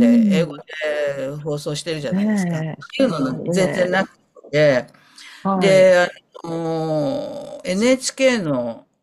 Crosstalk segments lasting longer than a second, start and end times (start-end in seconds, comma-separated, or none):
2.1-3.9